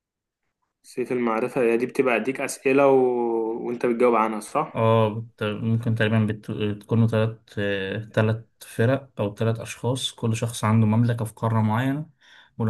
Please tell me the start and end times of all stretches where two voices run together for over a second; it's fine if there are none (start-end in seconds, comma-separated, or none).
none